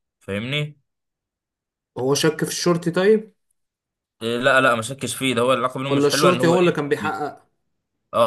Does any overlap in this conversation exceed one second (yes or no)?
yes